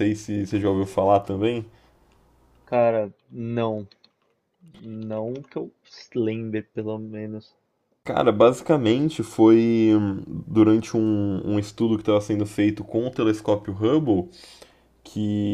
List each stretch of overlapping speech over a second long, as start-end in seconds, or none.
none